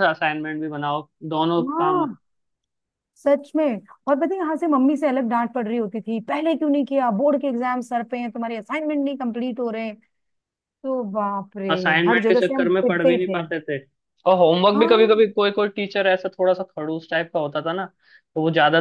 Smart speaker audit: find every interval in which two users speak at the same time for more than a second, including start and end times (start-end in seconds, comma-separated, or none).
11.7-13.4